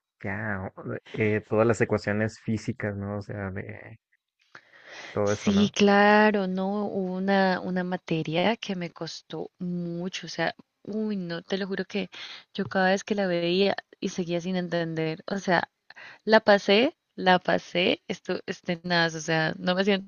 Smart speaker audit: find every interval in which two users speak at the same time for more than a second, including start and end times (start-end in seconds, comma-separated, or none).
none